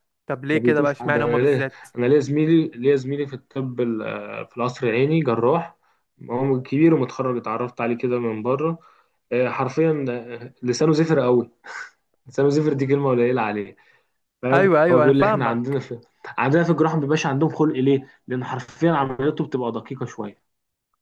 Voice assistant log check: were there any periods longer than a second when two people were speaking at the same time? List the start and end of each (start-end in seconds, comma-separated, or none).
0.5-1.9, 14.5-15.8